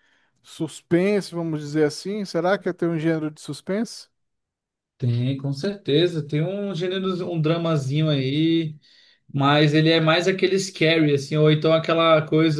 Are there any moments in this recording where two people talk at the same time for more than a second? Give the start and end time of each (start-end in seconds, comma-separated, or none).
none